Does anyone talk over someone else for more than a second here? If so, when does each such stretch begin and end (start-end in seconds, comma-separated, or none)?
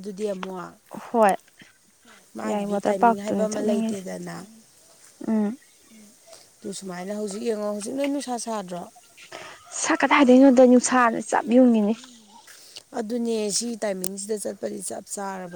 2.5-4.0